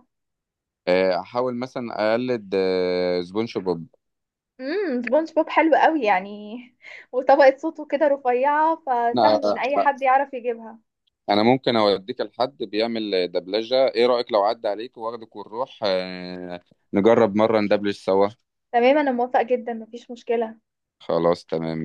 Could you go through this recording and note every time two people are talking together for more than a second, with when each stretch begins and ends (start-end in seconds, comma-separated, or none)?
none